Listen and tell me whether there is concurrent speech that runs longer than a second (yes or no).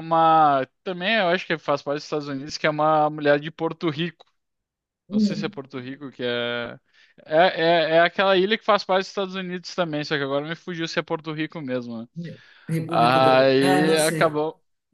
yes